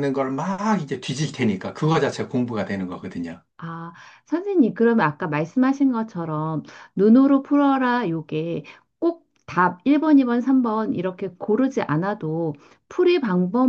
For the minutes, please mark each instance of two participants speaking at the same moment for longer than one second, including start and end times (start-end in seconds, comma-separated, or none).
none